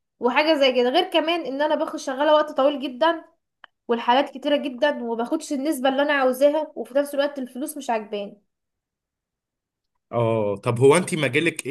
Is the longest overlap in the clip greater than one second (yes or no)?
no